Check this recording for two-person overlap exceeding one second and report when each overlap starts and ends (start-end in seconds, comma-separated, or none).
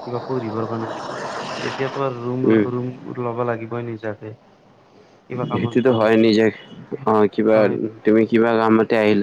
none